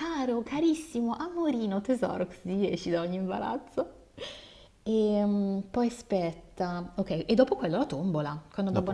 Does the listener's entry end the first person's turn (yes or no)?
no